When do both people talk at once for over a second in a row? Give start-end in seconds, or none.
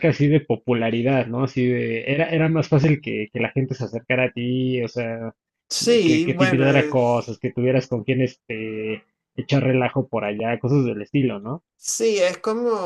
6.0-7.4